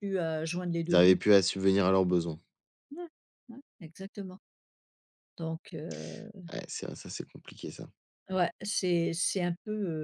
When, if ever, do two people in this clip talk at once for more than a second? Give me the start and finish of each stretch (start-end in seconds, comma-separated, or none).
none